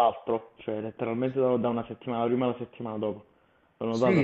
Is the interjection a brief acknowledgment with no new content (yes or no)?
no